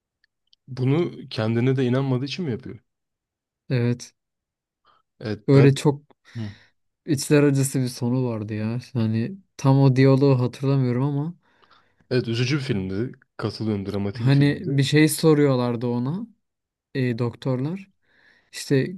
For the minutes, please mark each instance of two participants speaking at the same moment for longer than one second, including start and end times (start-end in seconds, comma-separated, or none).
none